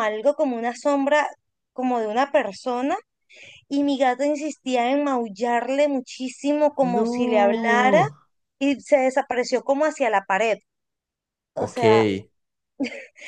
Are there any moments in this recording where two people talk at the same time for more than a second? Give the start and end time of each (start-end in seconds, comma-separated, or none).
6.8-8.0